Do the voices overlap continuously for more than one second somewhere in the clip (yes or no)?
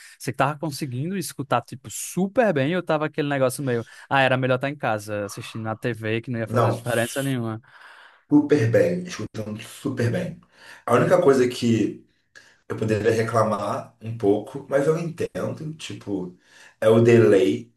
no